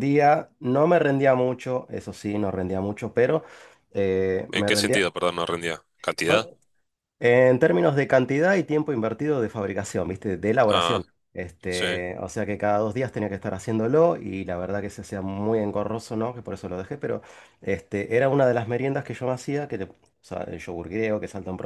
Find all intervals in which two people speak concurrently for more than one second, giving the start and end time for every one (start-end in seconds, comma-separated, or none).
none